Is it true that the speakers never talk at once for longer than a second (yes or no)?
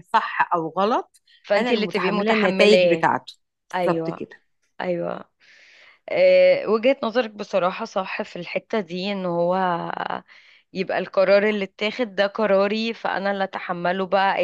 no